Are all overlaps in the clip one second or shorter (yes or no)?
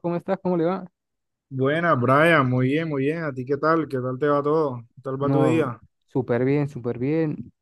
yes